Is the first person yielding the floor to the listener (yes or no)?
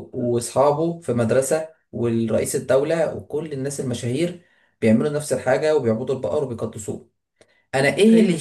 no